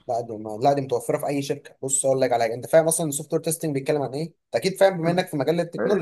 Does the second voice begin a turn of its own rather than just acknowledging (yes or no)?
yes